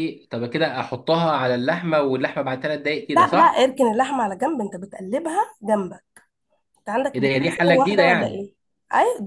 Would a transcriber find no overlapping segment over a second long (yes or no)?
no